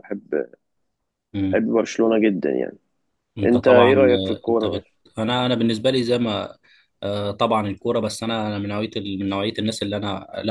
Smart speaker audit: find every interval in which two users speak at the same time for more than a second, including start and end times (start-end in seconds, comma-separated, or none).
3.4-4.7